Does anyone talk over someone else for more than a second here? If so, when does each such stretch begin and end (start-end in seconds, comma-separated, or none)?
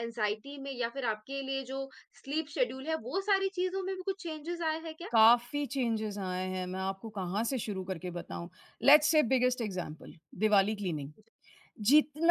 none